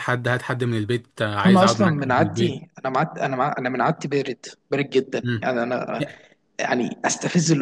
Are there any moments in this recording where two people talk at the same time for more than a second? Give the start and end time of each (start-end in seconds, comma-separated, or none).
1.4-2.6